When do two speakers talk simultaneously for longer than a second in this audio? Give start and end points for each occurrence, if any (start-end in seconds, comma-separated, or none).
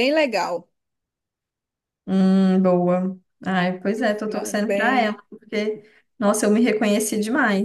4.0-5.2